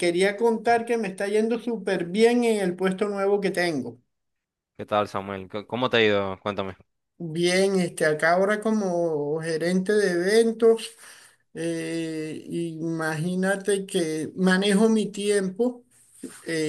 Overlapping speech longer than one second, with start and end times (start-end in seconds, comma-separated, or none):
none